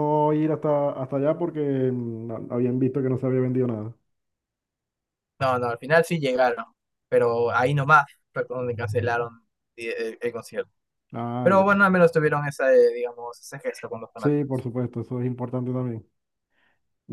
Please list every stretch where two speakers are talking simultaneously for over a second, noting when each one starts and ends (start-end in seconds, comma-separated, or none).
none